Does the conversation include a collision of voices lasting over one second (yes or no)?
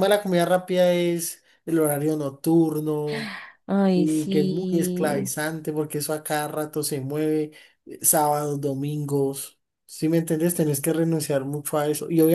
yes